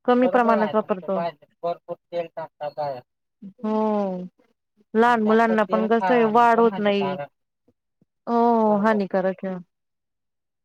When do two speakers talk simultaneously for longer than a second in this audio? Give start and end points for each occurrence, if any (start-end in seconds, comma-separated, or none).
5.2-7.2